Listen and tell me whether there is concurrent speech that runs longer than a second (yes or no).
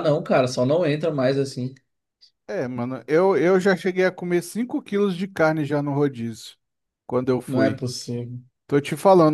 no